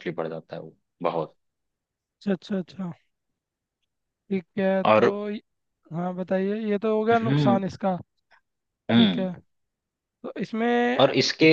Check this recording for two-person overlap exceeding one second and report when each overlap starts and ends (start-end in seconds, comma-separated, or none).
none